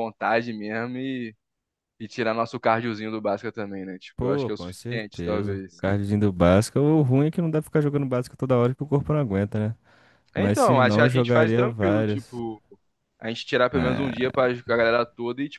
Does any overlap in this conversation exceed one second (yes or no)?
yes